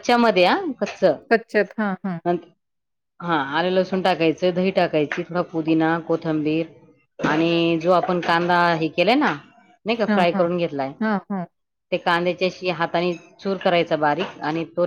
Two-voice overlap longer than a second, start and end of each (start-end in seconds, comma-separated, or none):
none